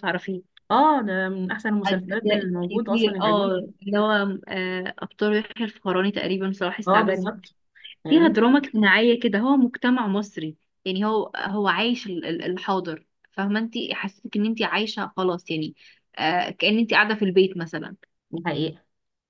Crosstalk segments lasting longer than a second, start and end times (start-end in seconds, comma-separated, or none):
1.9-3.7